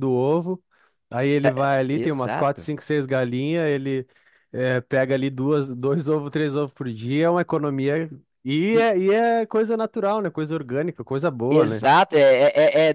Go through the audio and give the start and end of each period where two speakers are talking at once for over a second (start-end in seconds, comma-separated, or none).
1.4-2.7